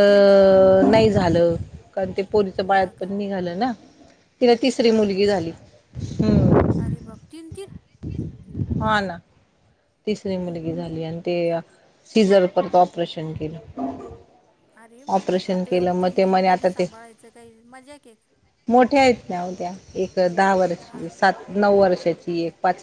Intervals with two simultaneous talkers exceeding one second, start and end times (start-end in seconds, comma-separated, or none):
15.1-16.9